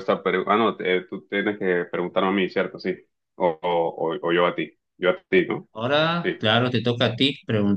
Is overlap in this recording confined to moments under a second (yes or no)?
yes